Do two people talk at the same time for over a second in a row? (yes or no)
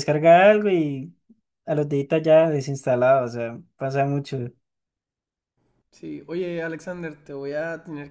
no